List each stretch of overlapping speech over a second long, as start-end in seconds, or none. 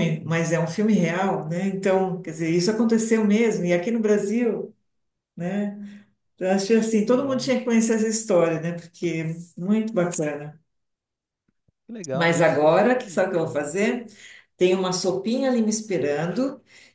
12.1-13.9